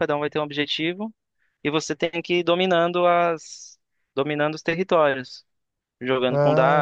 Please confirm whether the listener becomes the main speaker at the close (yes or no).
no